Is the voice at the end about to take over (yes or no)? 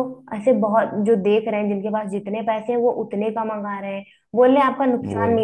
no